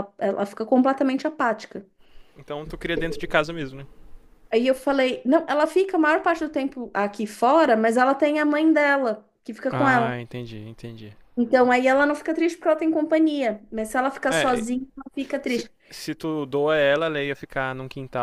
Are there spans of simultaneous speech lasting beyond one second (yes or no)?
no